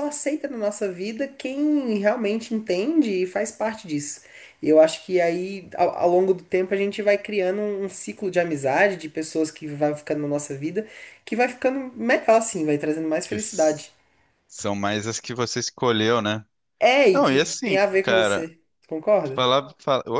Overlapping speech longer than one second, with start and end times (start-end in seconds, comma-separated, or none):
17.1-18.5